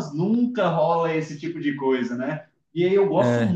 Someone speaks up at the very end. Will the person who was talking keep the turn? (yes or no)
yes